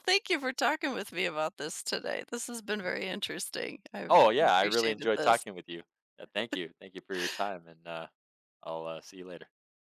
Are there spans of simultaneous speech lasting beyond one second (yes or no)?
yes